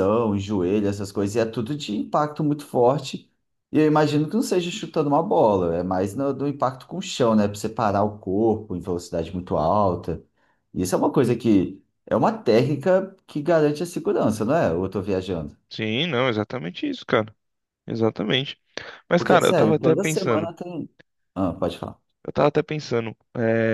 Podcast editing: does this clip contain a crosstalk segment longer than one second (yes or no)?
yes